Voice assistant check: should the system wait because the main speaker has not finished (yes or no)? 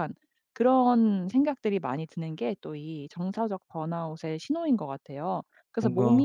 yes